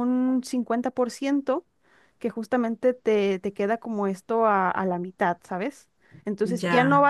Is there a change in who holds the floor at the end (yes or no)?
no